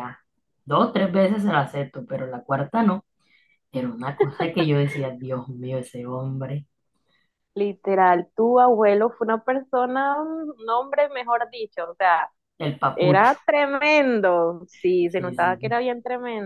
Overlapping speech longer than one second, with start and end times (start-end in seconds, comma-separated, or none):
none